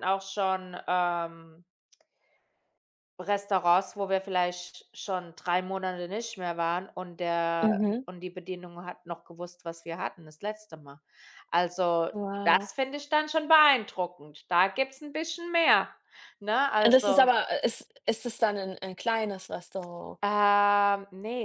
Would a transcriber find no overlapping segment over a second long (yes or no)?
yes